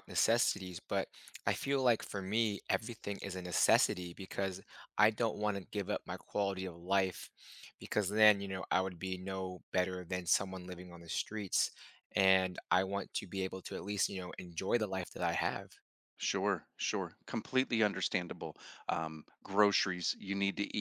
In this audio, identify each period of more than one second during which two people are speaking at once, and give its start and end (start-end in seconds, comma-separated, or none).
none